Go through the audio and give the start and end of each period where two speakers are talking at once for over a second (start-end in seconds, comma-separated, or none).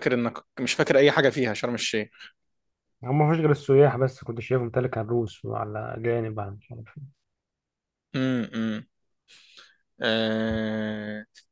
none